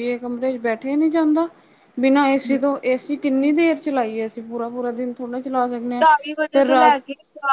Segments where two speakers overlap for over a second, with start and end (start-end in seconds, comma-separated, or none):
none